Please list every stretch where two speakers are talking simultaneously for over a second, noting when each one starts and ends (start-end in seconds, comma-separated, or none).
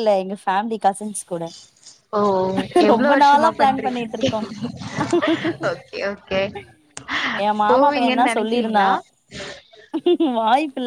2.9-4.3, 7.7-8.9